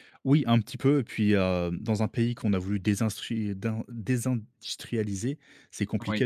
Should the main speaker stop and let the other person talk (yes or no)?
no